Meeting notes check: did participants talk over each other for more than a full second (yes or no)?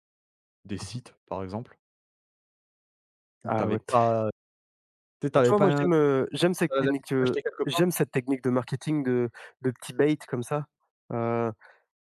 yes